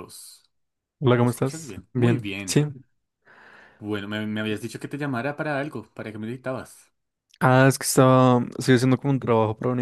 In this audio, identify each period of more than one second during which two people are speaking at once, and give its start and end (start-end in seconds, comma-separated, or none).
1.2-2.6